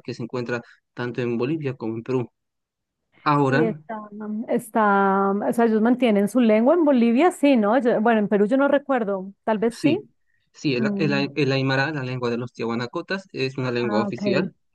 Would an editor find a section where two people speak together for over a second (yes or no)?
no